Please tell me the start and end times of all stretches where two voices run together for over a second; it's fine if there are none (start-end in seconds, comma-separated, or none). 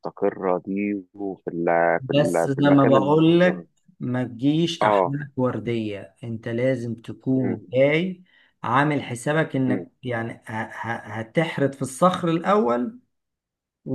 2.1-3.6